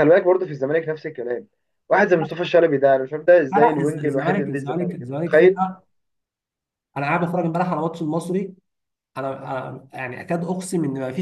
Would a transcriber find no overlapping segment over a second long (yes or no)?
no